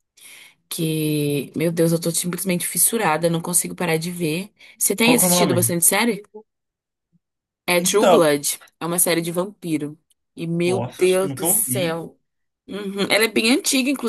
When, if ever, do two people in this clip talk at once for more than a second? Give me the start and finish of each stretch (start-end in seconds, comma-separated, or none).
10.7-12.0